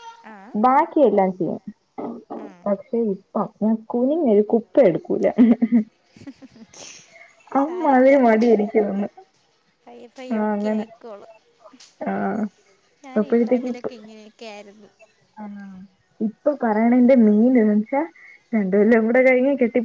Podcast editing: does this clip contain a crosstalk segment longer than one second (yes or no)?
no